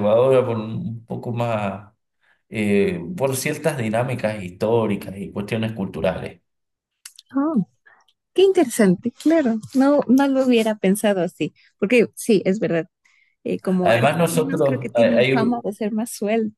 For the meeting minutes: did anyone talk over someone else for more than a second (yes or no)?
yes